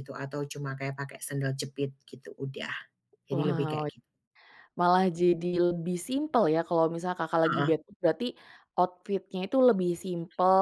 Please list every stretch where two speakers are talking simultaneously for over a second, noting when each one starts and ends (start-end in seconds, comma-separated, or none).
none